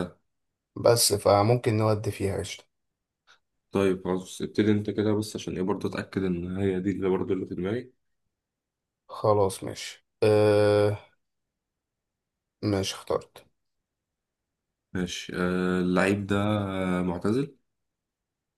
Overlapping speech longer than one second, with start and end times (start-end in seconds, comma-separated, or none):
none